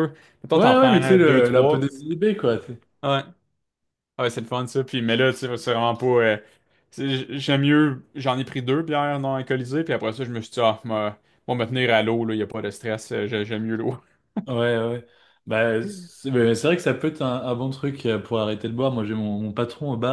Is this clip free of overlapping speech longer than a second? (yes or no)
no